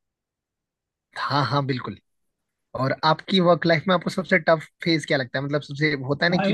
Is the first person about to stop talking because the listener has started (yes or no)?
yes